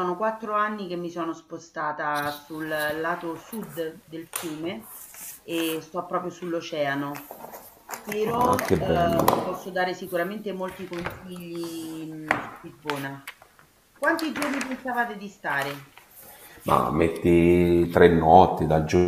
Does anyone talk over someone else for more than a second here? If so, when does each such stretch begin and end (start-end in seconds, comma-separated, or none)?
8.3-9.6